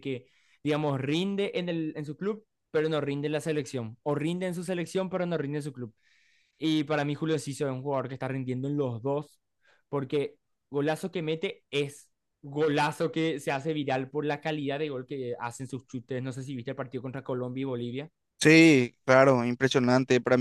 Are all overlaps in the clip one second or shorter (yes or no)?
yes